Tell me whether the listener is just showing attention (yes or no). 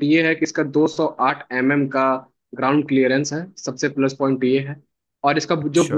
yes